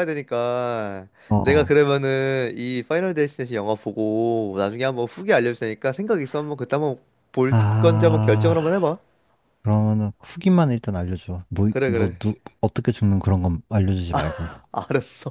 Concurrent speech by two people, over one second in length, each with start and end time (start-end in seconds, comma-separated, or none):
7.5-8.9